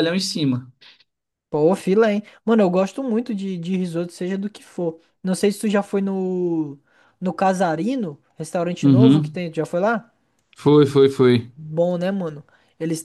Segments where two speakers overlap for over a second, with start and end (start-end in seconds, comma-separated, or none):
none